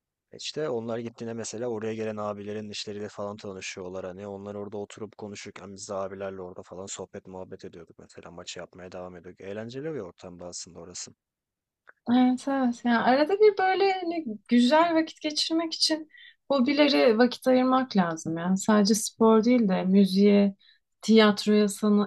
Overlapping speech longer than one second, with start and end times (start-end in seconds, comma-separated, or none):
none